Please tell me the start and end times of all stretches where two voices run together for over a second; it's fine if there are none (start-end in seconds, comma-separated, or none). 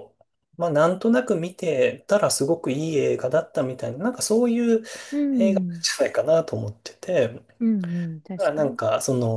none